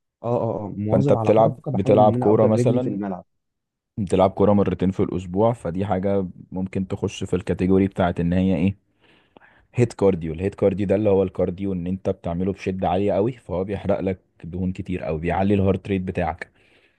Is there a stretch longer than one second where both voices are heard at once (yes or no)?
yes